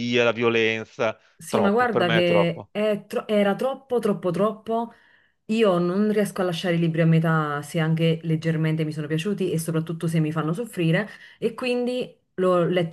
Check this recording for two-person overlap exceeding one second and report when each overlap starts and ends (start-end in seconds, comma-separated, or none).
1.4-2.7